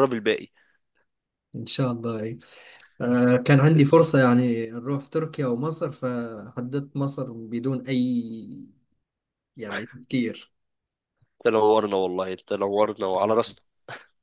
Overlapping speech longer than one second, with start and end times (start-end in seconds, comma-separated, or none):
none